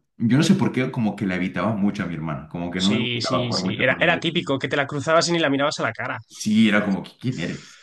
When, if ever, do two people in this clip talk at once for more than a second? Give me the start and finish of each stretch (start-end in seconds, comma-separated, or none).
2.8-4.2